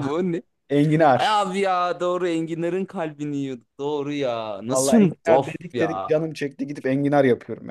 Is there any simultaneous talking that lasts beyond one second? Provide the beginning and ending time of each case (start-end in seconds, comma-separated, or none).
4.7-6.1